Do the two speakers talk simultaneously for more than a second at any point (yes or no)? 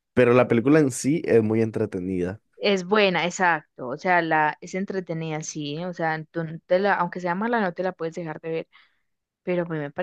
no